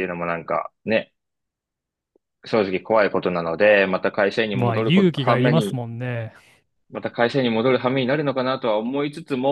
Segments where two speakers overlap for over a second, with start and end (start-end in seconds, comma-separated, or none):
4.5-5.8